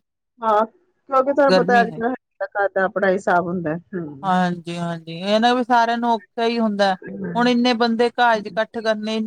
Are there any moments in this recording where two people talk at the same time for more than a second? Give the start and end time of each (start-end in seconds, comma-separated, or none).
none